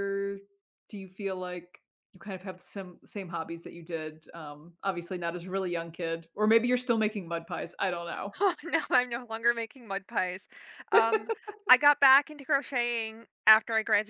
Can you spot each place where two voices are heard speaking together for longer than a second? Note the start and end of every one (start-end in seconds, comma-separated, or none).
none